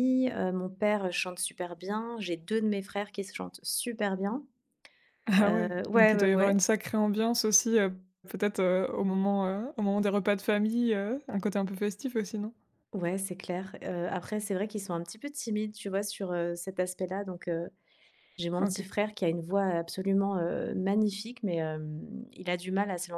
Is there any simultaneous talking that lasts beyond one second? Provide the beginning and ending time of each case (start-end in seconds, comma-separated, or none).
5.4-6.6